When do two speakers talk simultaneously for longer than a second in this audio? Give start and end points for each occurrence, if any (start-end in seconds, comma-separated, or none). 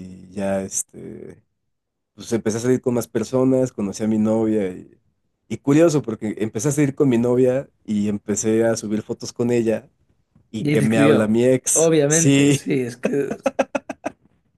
10.6-12.6